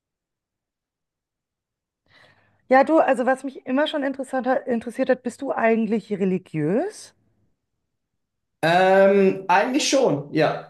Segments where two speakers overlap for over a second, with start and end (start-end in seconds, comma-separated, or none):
none